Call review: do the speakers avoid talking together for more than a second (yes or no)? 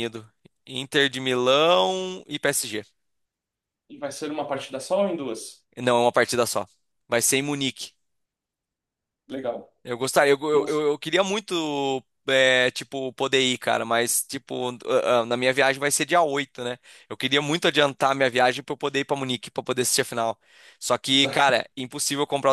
yes